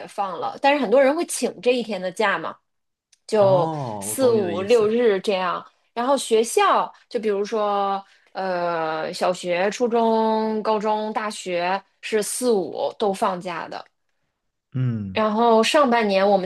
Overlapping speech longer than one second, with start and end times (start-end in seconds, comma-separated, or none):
3.4-5.0